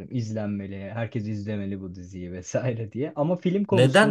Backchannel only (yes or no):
no